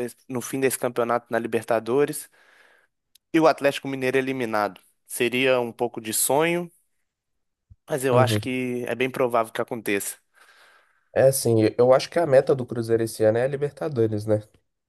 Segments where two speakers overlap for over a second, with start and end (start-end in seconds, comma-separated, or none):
none